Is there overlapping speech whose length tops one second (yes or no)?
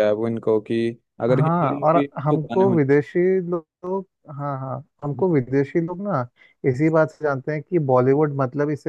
yes